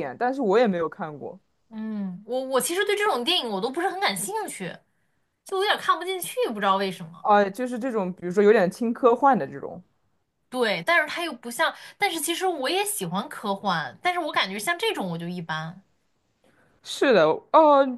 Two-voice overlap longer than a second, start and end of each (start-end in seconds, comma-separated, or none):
none